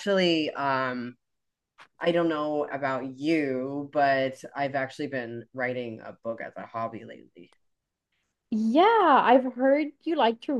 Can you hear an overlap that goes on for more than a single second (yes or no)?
no